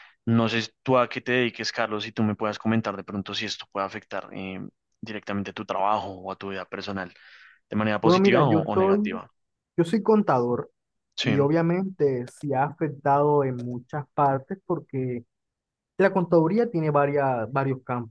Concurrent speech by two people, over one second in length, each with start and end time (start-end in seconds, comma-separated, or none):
8.0-9.2